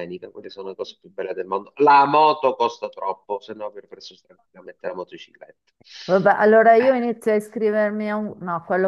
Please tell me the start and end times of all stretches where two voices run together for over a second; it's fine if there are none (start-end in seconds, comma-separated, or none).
none